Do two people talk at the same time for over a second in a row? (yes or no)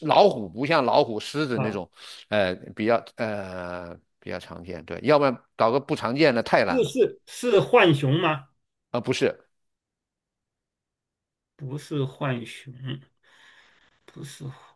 no